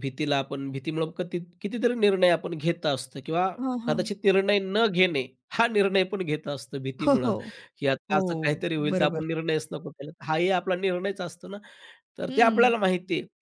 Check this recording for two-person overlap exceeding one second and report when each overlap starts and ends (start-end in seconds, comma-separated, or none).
none